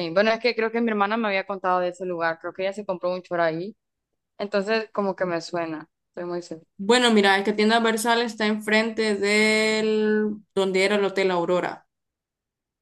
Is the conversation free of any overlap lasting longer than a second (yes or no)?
yes